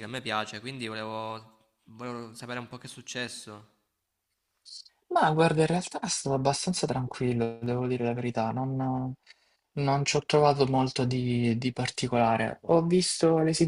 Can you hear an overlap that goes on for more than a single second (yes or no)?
no